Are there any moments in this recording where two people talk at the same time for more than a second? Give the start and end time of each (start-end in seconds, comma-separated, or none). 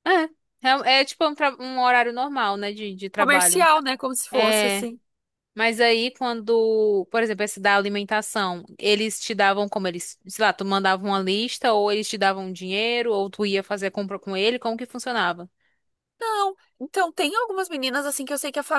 none